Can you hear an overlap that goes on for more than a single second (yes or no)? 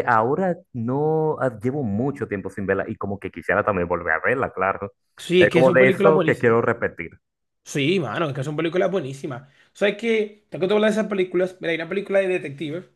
yes